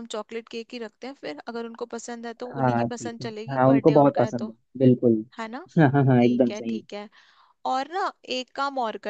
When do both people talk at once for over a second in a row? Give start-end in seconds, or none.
2.5-4.5